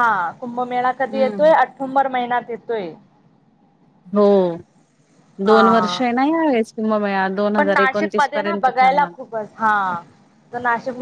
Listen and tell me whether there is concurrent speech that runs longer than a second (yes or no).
yes